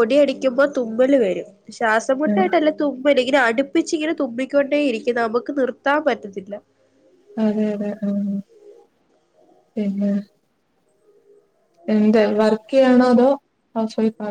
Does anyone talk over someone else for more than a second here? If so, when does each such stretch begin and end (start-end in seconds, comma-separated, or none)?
none